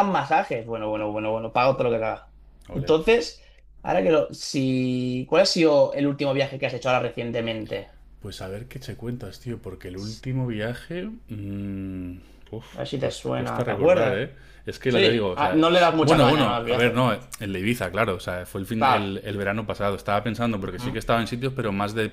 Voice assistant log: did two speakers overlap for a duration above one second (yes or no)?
yes